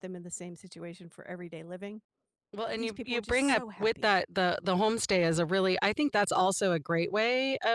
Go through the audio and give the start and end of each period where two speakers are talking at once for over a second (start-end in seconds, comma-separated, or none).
2.7-4.2